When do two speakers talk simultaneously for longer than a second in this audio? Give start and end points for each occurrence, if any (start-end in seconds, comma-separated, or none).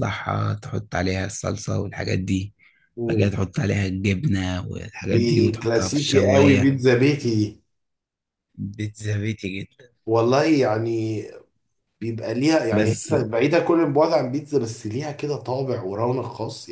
5.0-6.7